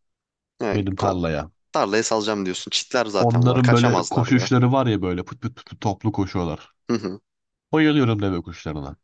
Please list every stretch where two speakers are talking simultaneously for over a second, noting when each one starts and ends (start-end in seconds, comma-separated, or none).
3.1-4.5